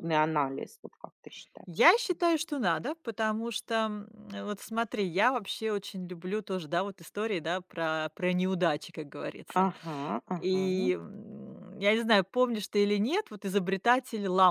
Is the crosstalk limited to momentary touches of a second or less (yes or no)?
yes